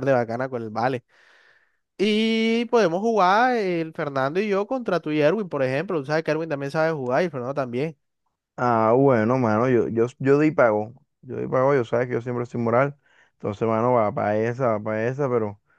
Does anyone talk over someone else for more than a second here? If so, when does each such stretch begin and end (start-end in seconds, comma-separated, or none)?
none